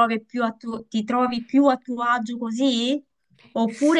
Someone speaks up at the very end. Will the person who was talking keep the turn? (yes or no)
no